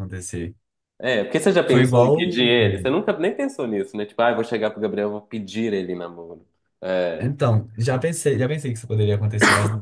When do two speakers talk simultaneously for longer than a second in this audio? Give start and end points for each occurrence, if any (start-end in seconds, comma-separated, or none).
1.6-2.9